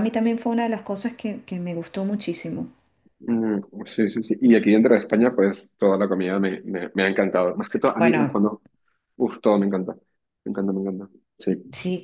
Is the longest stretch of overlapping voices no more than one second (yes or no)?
yes